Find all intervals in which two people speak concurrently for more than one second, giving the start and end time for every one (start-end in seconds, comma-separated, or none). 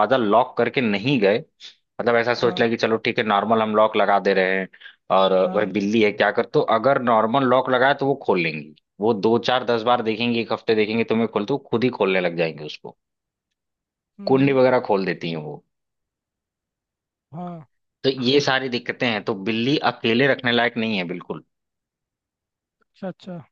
none